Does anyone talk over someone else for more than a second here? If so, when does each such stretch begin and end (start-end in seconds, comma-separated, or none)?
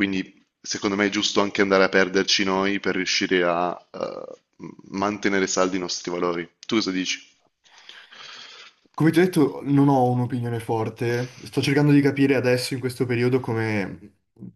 none